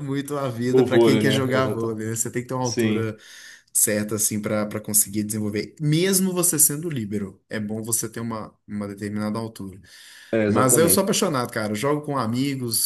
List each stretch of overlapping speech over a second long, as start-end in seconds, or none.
0.7-2.0